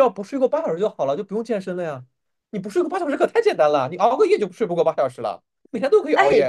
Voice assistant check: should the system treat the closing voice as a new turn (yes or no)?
yes